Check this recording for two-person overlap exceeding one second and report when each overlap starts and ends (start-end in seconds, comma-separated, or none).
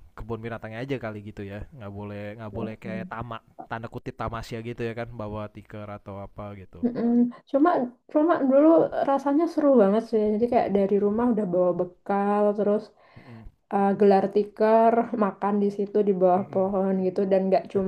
none